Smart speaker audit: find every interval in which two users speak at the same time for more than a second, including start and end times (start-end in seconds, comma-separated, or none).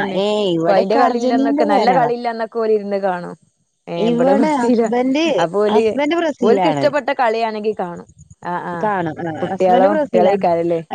0.6-2.1